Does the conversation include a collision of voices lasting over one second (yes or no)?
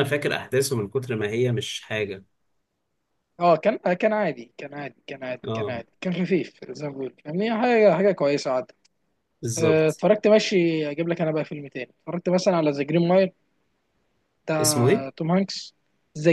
no